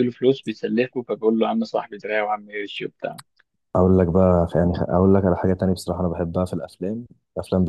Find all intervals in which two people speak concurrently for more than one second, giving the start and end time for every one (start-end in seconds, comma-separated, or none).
none